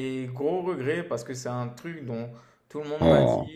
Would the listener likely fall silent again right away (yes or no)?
yes